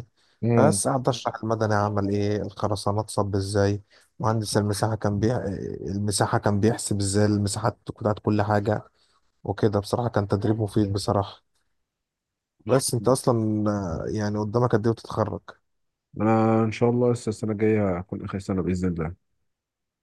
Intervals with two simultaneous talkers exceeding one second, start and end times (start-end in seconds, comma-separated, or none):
none